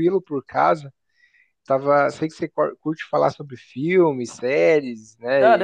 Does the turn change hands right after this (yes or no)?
yes